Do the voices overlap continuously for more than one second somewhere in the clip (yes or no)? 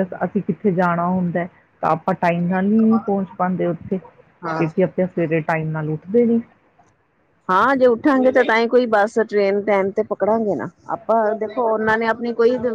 no